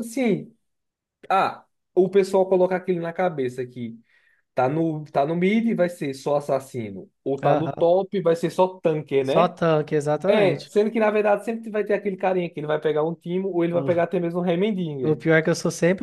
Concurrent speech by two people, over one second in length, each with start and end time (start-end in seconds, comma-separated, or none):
none